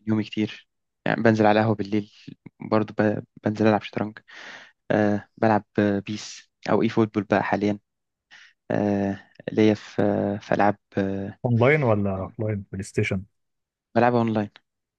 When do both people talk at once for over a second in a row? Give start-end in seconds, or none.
none